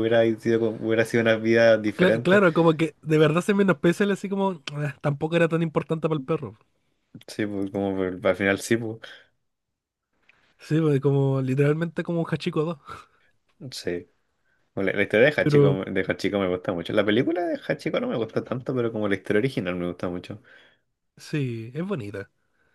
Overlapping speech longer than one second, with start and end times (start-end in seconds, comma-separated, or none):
none